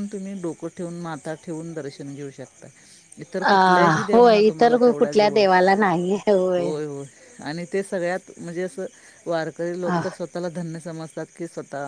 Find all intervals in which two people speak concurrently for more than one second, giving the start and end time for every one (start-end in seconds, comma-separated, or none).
3.5-5.4